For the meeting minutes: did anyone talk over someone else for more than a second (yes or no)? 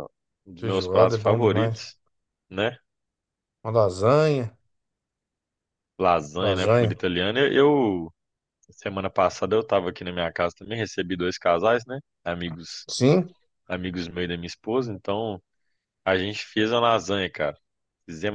yes